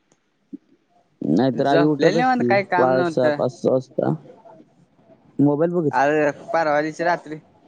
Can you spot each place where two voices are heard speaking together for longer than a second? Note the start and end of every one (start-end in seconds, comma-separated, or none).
1.6-3.4